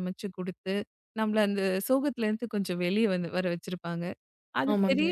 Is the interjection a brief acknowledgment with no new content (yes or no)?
yes